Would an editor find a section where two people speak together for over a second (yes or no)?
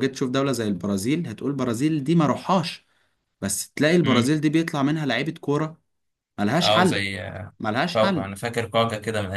no